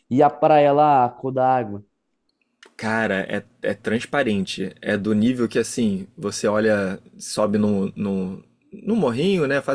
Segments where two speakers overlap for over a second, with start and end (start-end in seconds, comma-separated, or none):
none